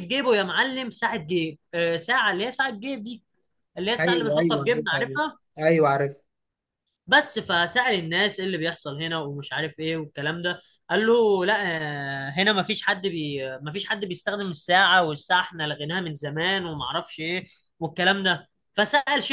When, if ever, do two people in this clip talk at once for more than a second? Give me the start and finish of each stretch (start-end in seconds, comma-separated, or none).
4.0-5.2